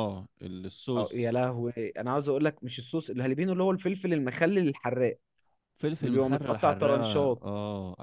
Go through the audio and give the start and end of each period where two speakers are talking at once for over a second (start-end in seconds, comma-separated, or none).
6.0-7.4